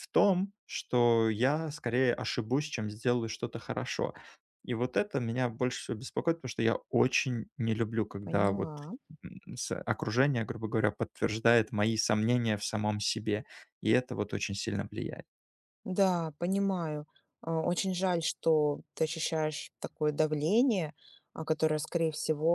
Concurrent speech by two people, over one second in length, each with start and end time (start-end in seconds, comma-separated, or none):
none